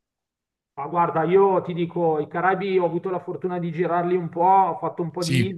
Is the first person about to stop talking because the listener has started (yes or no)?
no